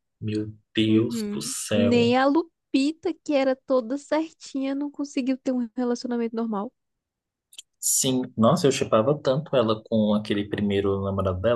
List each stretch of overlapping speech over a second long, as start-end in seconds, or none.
0.8-2.1